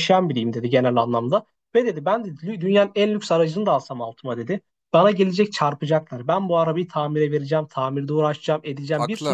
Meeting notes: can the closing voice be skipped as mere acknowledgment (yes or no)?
yes